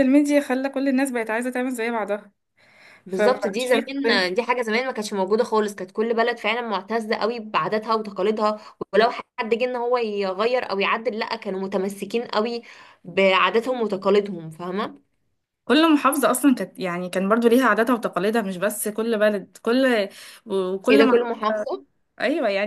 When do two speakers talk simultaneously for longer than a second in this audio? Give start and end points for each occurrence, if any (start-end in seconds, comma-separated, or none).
3.1-4.3